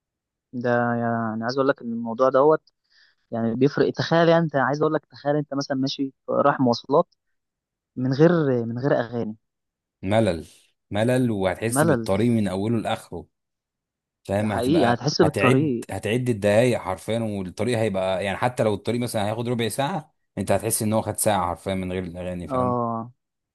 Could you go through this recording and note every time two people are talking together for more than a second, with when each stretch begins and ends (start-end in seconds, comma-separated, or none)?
14.4-15.9